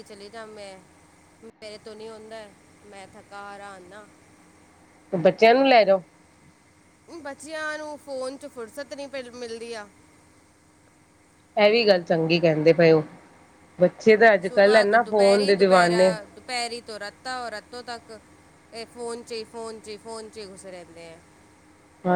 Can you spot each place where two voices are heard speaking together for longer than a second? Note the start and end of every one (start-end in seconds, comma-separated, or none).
none